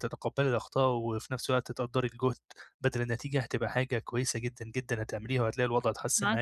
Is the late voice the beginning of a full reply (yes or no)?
yes